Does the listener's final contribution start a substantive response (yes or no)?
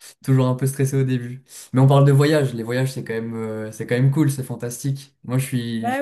no